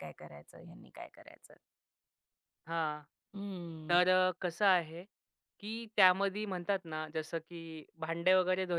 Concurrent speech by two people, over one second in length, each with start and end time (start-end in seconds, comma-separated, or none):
none